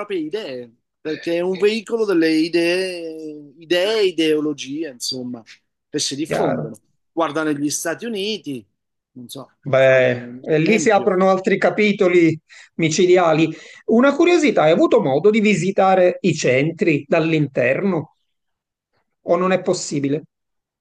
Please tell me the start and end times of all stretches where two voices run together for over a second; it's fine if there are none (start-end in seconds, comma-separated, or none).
9.6-11.1